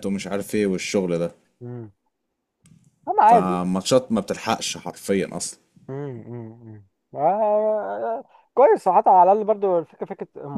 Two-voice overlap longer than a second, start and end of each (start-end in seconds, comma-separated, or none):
none